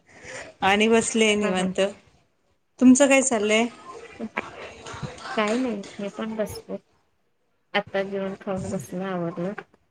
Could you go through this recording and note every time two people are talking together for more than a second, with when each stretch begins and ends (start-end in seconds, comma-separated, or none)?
none